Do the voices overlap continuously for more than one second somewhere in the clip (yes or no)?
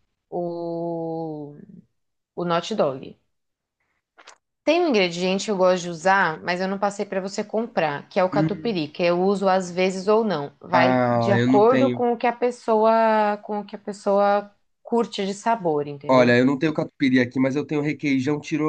yes